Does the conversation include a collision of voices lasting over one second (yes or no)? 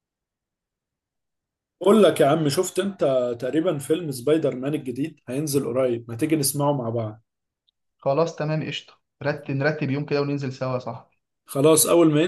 no